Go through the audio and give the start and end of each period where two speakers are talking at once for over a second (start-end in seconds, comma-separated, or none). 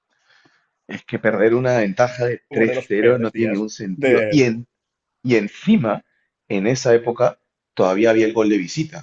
2.5-4.5